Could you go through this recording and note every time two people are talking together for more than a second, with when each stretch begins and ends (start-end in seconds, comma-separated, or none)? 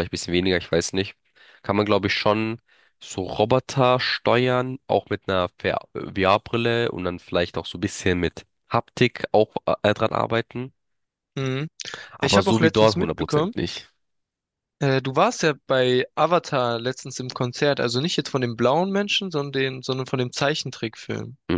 12.2-13.5